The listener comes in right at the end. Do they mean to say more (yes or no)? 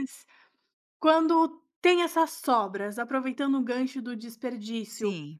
no